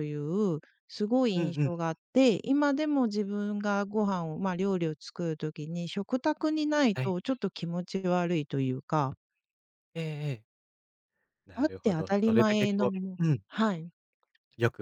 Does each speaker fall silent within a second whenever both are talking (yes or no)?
no